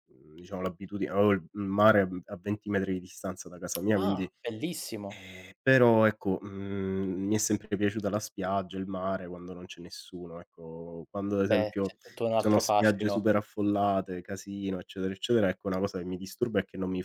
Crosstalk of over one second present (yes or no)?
yes